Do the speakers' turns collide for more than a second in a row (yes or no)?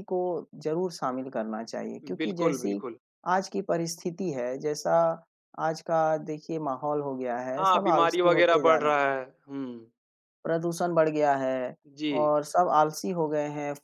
yes